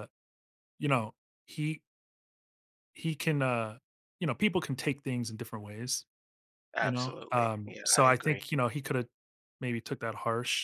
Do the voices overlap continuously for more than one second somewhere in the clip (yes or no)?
yes